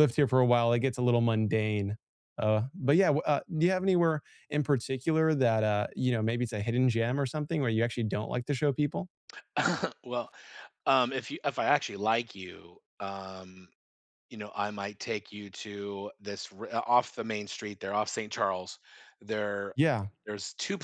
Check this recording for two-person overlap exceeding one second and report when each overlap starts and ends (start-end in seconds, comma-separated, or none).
none